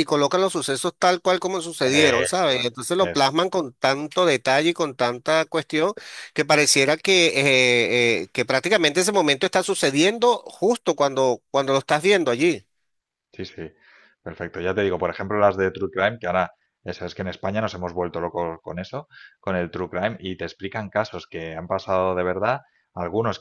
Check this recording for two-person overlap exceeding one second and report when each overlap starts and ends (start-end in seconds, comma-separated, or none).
1.9-3.5